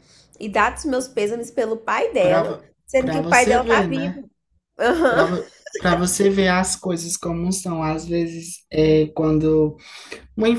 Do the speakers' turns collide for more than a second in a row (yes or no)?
yes